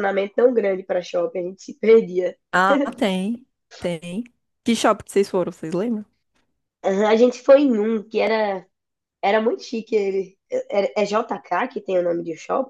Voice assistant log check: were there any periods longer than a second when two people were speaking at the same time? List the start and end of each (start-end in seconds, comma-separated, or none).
none